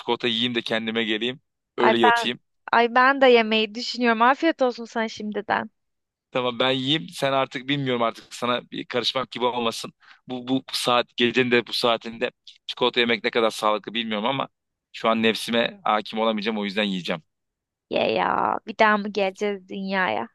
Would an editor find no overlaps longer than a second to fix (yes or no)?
yes